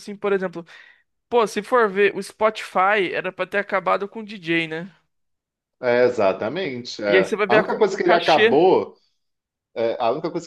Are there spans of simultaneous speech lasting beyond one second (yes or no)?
yes